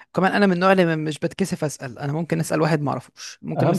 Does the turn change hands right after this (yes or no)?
no